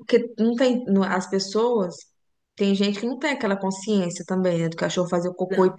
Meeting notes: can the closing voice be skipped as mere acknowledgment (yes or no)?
yes